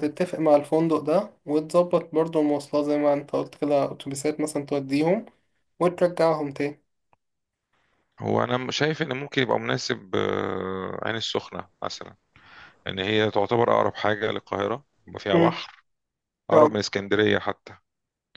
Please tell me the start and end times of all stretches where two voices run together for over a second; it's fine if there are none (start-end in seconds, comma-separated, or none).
none